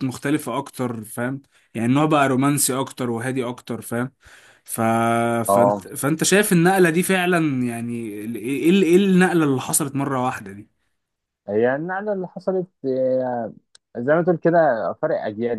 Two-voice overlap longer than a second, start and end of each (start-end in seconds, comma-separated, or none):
none